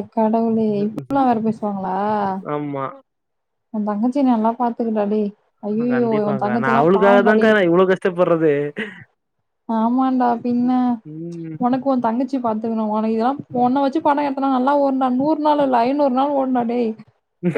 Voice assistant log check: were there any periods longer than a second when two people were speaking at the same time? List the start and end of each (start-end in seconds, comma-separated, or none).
5.9-7.5